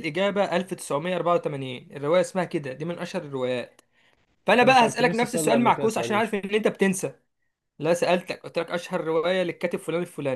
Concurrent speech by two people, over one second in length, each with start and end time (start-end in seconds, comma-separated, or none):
4.5-6.2